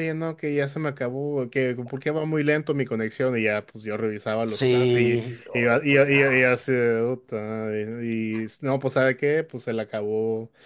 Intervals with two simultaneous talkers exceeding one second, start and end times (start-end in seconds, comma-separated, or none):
4.5-6.6